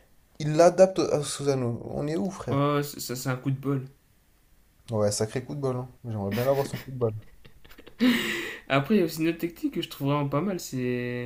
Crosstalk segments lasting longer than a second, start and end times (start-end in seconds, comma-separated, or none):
none